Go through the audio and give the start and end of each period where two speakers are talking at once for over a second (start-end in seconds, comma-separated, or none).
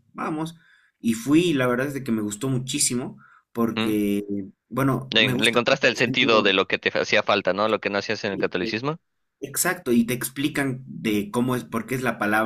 5.1-6.5